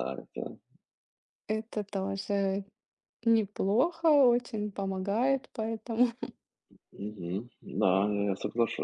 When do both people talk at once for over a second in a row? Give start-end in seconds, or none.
none